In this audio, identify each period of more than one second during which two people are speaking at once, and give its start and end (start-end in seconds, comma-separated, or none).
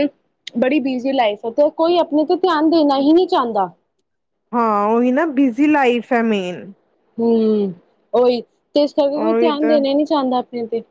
none